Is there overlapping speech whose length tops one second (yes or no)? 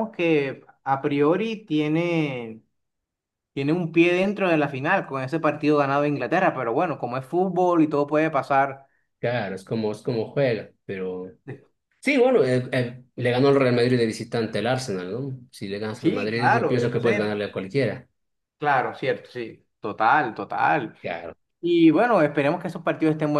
yes